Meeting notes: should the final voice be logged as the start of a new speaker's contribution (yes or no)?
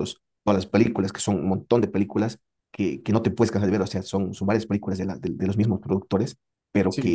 no